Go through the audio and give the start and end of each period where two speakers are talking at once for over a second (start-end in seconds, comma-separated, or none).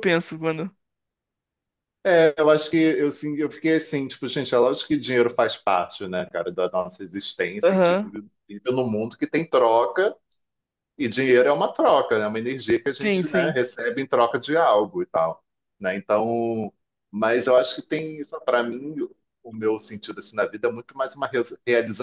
none